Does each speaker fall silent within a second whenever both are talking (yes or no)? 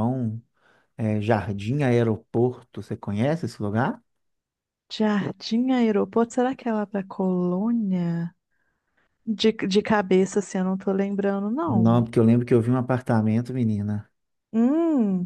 yes